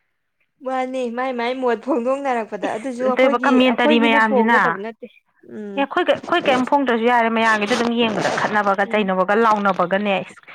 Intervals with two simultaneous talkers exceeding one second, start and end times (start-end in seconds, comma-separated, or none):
2.6-4.7